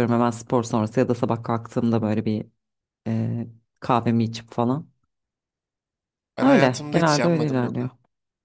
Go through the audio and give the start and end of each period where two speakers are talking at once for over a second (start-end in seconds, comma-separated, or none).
6.4-7.9